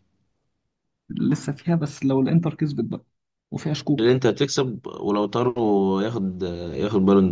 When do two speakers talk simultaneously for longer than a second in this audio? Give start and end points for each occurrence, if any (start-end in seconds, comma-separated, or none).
none